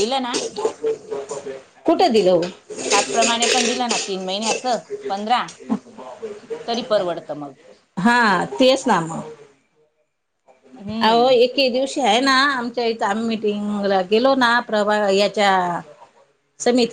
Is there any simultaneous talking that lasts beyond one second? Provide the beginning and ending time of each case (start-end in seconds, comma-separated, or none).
none